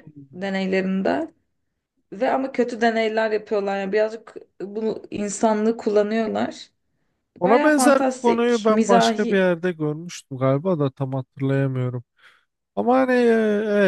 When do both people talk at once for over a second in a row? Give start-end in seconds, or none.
7.4-9.5